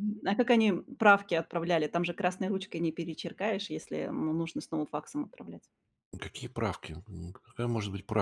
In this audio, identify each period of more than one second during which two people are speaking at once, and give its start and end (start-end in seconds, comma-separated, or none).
none